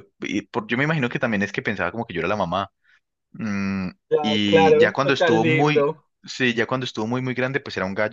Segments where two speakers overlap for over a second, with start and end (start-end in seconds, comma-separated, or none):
4.1-5.9